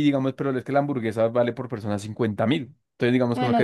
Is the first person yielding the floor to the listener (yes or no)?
no